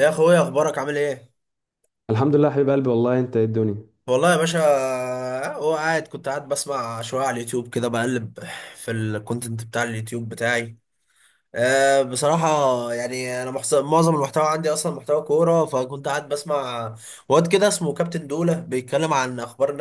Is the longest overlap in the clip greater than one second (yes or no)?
no